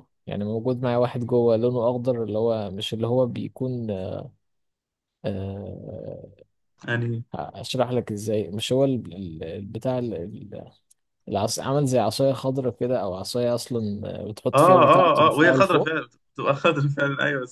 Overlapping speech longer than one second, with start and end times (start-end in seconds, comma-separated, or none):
14.5-15.9